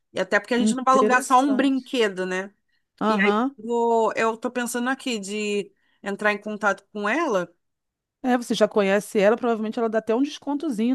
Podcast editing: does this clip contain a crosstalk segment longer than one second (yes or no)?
yes